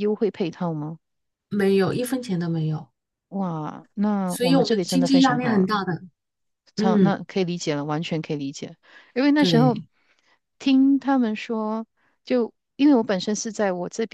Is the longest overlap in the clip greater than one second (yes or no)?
yes